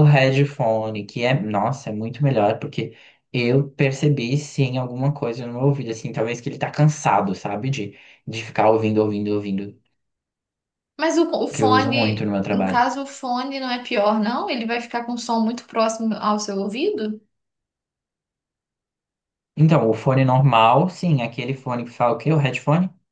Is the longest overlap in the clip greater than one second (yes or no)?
yes